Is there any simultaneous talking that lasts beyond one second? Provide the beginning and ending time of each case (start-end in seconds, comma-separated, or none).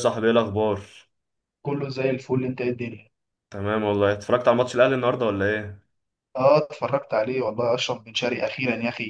none